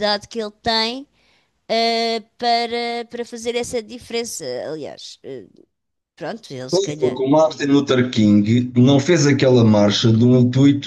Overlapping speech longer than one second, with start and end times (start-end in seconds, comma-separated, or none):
none